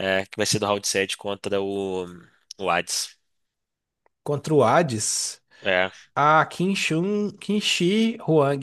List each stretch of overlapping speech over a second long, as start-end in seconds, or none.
none